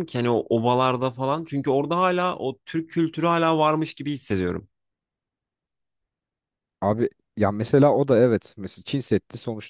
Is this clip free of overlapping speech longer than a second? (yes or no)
yes